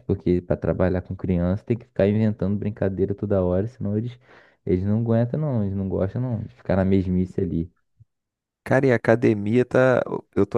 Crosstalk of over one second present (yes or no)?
no